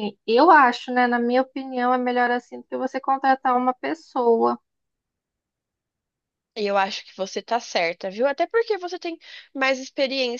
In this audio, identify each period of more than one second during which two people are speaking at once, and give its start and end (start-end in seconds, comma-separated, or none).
none